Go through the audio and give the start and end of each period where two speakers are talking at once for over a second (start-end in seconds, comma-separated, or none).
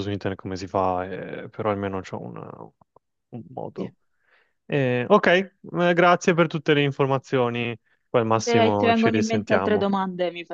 8.4-9.9